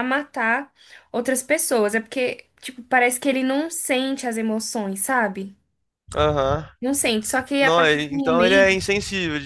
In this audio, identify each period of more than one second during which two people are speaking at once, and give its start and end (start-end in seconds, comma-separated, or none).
7.6-8.8